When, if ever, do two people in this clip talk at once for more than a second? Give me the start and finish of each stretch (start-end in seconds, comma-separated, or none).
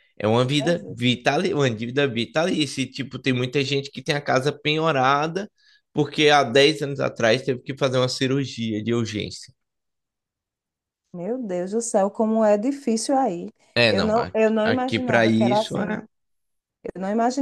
13.9-16.0